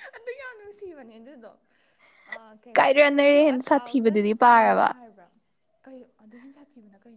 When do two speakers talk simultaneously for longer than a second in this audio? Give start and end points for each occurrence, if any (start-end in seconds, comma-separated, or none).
2.7-5.0